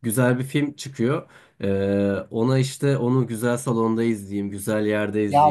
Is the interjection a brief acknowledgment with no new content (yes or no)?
no